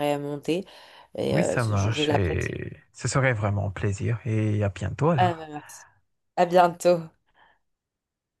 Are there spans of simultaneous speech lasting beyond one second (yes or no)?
yes